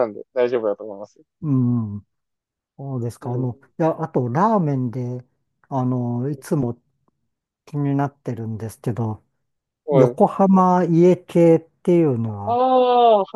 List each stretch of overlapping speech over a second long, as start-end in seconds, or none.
none